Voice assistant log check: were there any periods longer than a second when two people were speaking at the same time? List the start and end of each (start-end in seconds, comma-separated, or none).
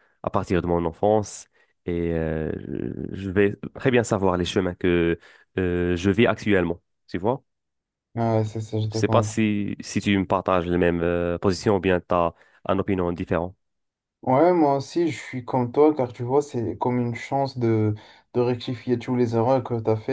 none